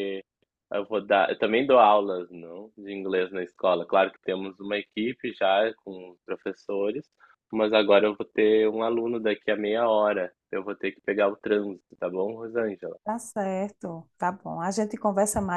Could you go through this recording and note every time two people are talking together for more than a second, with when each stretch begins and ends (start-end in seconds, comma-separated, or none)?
none